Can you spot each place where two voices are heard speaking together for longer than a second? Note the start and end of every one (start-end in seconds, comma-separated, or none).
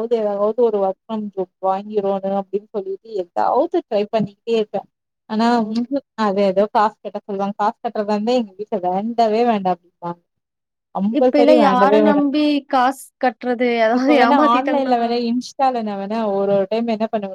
none